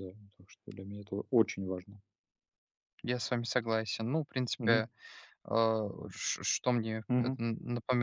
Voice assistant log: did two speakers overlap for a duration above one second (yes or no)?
no